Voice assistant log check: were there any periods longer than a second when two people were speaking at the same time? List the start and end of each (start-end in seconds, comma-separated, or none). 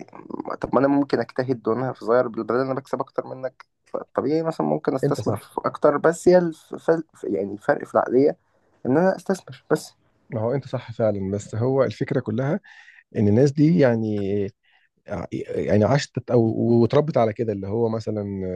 none